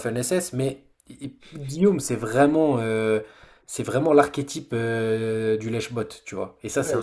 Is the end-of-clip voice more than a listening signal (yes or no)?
yes